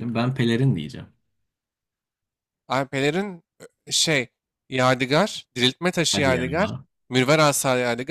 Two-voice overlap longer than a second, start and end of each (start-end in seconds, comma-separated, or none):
none